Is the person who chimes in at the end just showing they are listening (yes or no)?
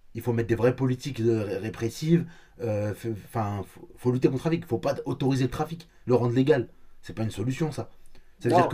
yes